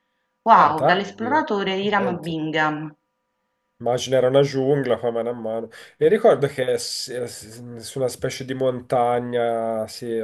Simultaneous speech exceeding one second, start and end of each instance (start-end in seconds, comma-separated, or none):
0.5-2.4